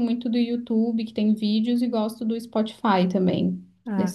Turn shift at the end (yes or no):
yes